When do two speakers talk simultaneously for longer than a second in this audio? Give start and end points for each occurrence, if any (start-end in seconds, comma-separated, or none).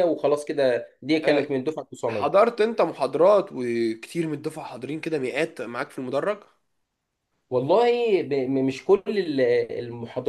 none